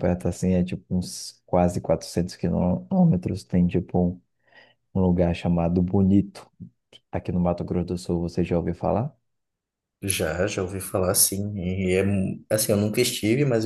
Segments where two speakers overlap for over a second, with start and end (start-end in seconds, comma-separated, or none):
none